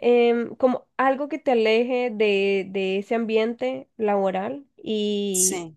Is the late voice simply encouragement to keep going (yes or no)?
yes